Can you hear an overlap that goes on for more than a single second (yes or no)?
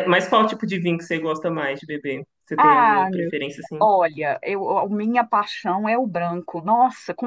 no